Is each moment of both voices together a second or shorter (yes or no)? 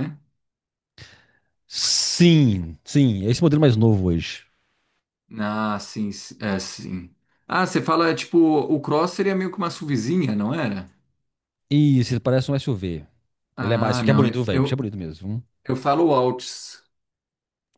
no